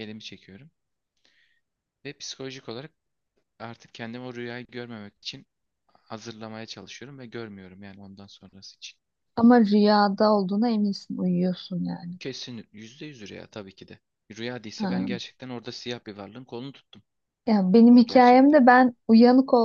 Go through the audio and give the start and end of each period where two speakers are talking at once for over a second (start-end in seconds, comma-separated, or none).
none